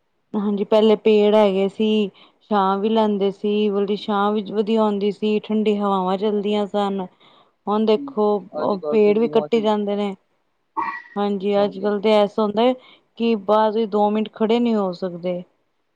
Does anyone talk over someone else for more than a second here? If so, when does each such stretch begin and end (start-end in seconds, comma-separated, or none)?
8.0-10.0